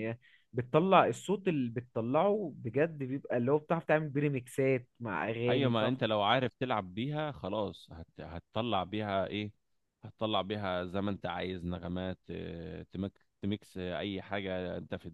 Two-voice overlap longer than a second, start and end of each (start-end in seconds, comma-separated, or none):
none